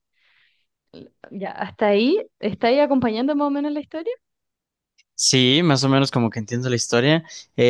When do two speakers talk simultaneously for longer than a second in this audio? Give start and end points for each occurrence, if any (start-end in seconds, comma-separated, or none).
none